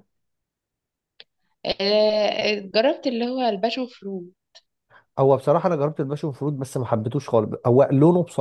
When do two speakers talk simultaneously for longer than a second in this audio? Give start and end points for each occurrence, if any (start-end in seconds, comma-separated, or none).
none